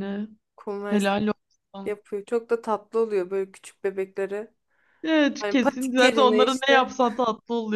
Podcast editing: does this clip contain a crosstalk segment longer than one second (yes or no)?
yes